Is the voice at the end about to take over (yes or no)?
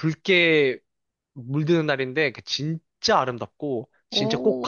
yes